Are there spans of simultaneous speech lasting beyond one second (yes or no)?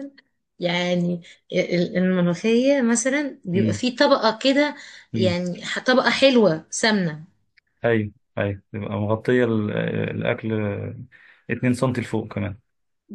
no